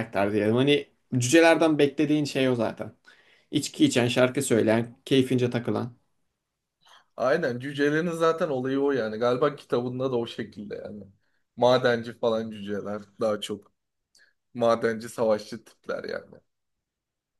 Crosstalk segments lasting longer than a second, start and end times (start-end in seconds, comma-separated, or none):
none